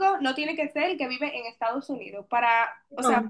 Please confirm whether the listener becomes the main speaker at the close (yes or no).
no